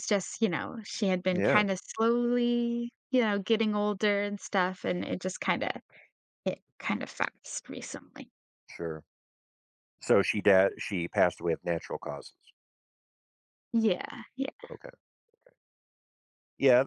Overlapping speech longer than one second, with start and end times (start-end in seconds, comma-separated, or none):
none